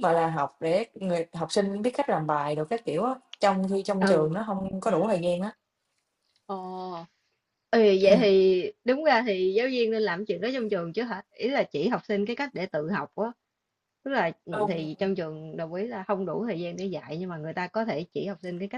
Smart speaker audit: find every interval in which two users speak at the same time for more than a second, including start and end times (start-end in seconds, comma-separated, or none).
none